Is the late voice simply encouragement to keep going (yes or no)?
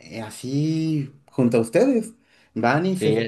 yes